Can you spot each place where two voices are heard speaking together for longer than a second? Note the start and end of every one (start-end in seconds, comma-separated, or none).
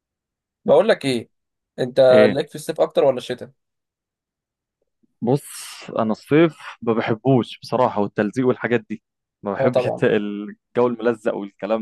none